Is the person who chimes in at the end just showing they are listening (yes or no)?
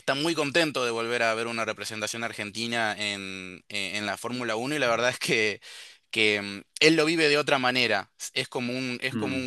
yes